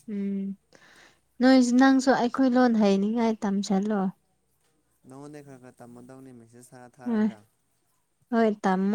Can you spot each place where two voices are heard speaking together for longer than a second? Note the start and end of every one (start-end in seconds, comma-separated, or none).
none